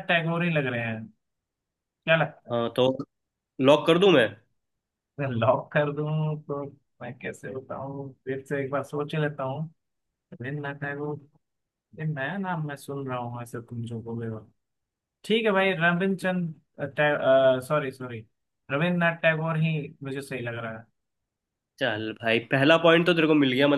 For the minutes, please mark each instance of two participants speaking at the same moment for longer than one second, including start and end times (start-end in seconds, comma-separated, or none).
none